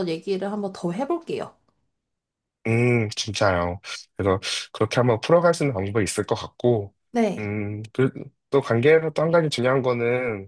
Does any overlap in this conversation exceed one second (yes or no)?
no